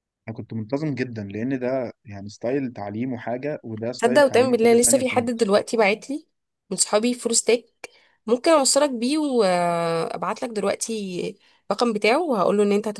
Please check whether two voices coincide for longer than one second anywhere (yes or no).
yes